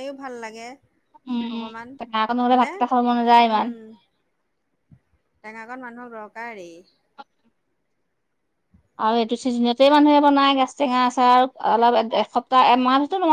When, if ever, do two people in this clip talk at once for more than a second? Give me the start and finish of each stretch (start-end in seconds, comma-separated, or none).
none